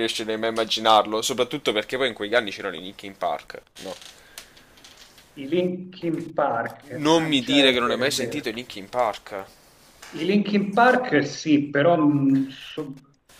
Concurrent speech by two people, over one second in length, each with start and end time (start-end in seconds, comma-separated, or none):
6.9-8.5